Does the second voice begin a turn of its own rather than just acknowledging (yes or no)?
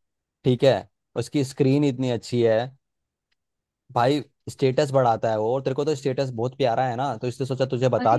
yes